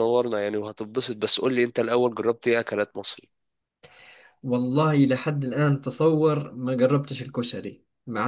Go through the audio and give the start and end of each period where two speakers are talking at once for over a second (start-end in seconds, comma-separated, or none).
none